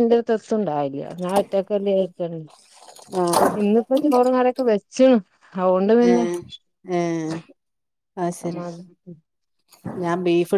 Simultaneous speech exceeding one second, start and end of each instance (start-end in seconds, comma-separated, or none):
none